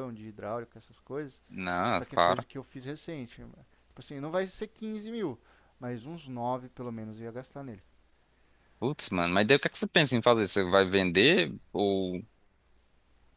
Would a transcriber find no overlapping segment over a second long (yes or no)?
yes